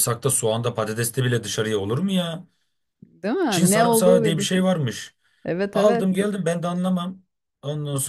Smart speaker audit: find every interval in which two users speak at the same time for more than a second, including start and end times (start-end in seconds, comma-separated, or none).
3.5-4.8